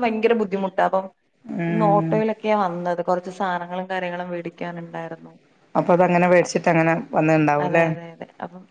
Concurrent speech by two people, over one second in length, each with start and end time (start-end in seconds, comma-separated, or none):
none